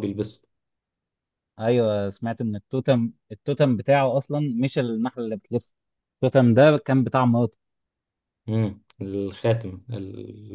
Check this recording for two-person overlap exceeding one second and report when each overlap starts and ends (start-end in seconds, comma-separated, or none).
none